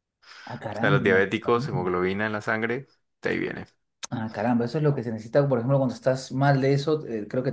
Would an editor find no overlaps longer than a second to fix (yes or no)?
no